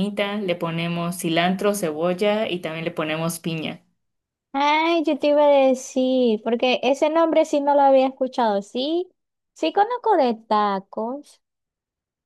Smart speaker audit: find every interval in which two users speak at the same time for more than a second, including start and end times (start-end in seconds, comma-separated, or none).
none